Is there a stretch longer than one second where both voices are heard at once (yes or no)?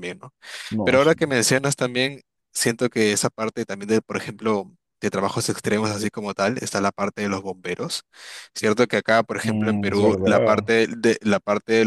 yes